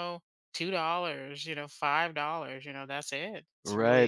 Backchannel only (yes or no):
no